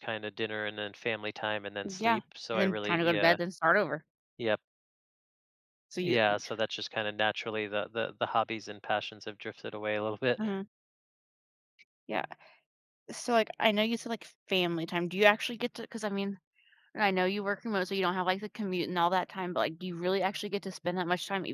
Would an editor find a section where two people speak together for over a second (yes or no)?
yes